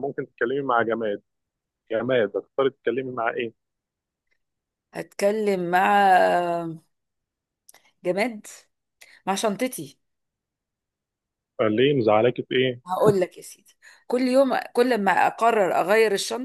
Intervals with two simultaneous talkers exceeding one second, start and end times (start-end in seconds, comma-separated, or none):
none